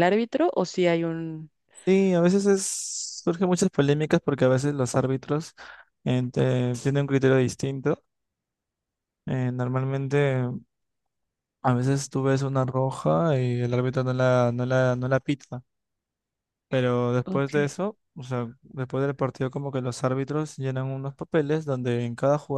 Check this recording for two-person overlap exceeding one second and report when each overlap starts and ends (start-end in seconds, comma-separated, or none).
none